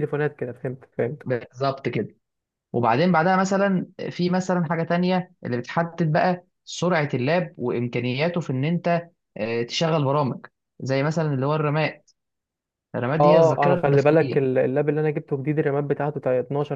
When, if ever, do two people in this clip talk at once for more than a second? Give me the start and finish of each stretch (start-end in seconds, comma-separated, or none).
13.2-14.5